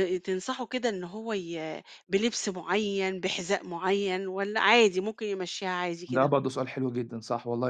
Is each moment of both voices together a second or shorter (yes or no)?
yes